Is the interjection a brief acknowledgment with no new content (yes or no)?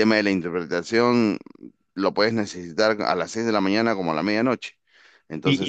no